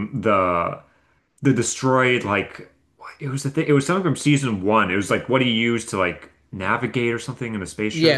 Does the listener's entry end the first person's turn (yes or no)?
yes